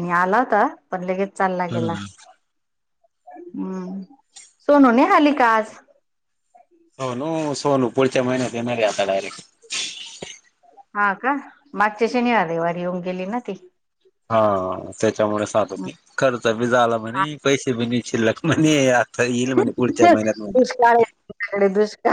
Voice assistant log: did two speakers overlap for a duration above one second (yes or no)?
yes